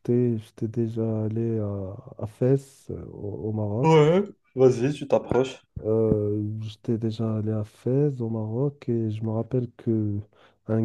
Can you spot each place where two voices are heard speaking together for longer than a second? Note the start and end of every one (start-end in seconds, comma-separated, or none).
none